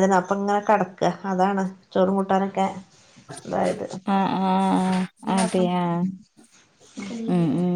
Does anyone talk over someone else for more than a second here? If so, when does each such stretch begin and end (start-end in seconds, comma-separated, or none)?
none